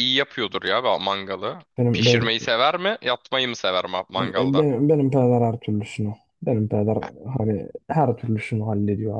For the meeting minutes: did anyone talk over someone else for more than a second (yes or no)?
no